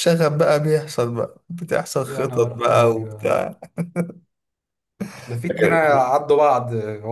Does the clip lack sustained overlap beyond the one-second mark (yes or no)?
no